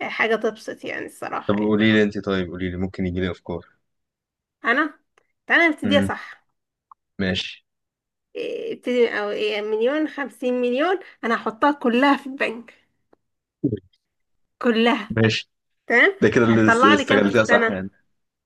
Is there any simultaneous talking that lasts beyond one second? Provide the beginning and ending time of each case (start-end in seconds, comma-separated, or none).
16.5-17.8